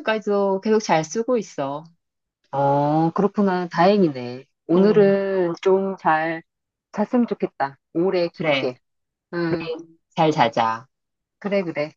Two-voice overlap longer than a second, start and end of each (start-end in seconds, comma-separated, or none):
none